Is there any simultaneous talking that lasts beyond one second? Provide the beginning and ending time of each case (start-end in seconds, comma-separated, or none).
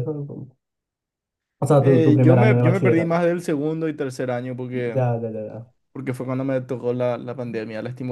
1.8-3.2